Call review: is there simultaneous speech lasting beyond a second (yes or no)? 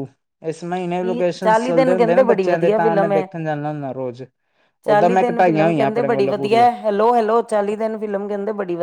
yes